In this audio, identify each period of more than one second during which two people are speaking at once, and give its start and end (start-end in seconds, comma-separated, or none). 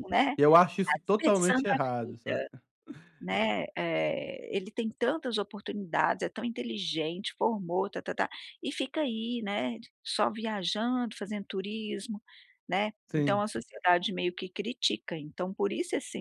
0.8-2.5